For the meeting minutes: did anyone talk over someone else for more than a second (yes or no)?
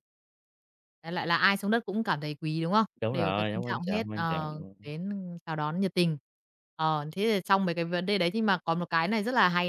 yes